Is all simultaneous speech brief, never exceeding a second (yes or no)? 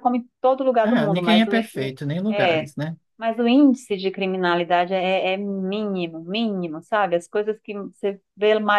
no